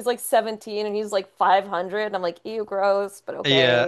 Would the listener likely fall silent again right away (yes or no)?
no